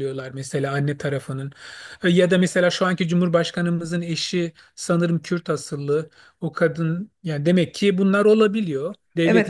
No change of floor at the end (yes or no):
no